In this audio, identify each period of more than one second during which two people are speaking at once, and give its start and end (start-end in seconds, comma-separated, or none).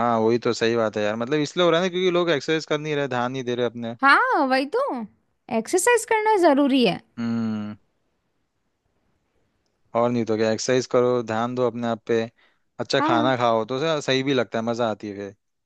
none